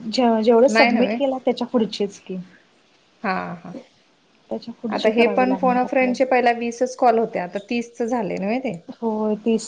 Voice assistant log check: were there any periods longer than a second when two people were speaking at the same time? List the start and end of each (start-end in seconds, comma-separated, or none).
5.0-6.4